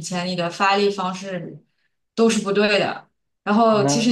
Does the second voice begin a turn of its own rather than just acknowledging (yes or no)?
no